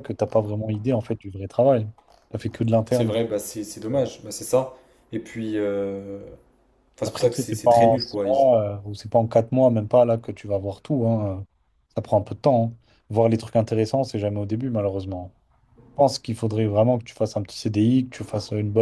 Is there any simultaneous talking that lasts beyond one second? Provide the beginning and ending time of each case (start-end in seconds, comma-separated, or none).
7.0-8.3